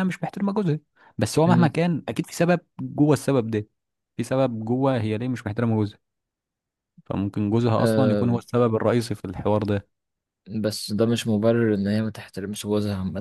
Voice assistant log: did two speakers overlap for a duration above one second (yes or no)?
no